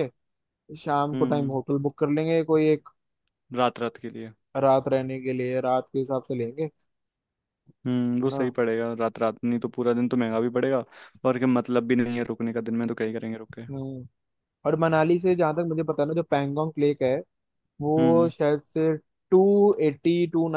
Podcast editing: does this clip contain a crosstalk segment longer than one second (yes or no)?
no